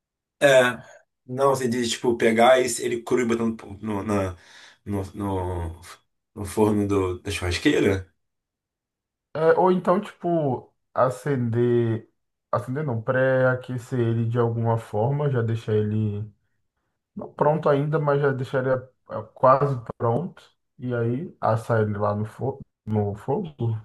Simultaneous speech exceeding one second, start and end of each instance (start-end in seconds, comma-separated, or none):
none